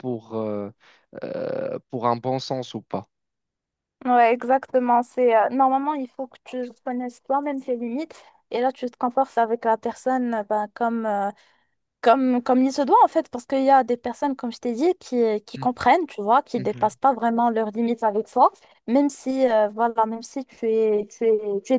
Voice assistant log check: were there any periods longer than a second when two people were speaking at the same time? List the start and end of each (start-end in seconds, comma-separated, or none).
none